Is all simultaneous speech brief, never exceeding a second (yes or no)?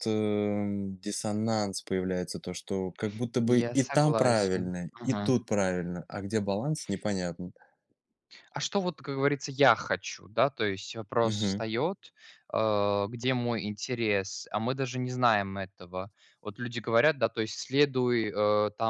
no